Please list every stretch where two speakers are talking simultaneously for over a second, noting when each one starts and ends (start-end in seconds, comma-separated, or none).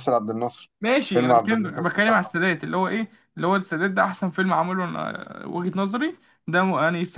1.1-2.5